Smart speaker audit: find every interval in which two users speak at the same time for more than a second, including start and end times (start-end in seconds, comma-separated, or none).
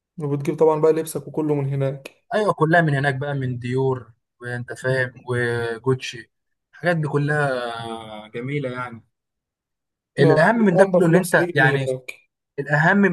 10.2-11.9